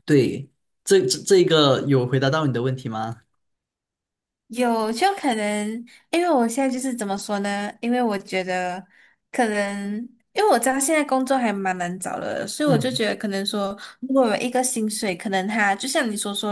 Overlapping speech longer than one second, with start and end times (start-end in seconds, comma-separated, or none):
none